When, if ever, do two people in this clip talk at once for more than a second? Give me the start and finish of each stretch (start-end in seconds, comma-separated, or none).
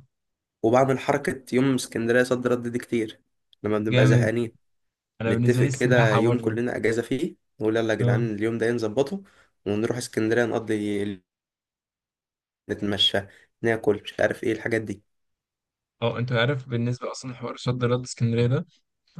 5.3-6.6